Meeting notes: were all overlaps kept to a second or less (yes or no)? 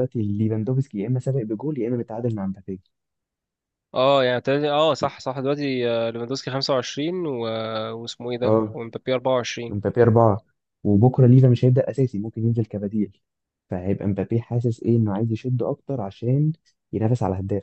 yes